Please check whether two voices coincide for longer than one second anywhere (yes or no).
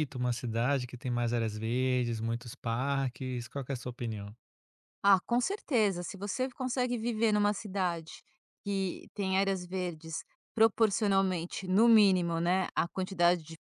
no